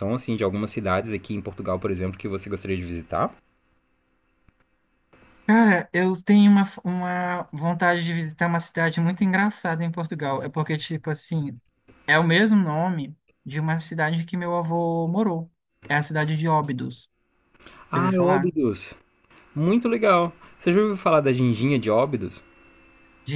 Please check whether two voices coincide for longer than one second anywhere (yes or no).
no